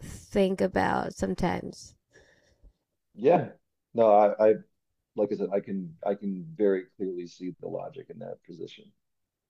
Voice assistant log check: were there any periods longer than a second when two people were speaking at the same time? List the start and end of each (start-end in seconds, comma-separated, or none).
none